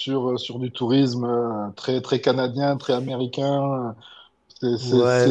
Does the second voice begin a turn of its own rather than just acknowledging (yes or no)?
yes